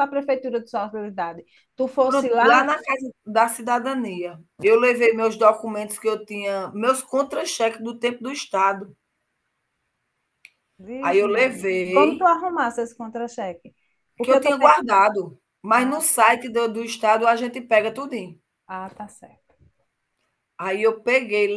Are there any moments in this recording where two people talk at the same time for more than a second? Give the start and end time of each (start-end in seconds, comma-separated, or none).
11.0-12.3